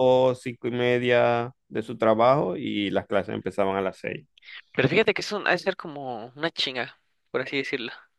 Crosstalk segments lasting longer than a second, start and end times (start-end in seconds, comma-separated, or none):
none